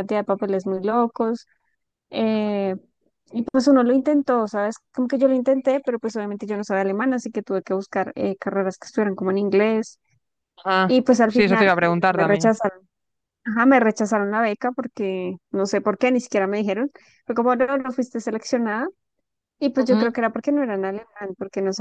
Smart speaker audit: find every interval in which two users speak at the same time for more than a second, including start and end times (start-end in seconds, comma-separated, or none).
10.9-12.5